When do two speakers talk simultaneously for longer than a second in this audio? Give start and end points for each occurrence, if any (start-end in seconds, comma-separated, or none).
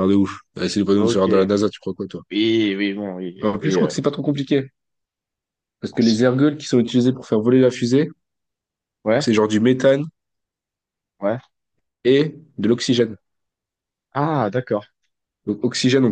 none